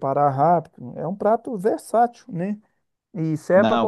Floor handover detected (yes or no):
no